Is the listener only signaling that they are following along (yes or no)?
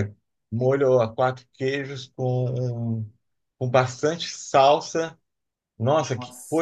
yes